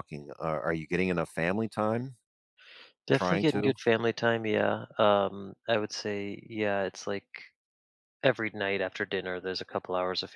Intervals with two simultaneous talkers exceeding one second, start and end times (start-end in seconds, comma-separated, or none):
none